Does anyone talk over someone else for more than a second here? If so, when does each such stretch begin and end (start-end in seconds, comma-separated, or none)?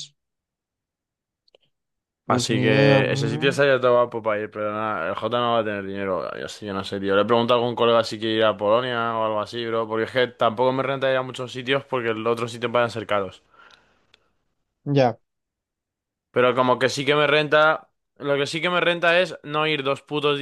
2.3-3.6